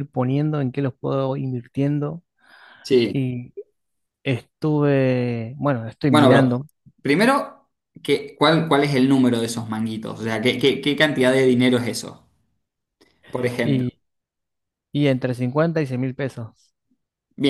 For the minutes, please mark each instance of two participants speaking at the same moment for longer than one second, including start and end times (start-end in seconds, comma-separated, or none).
none